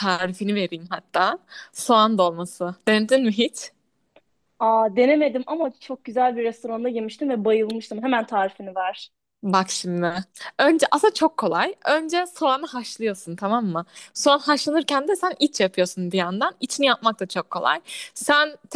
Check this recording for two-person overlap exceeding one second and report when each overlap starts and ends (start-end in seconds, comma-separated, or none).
none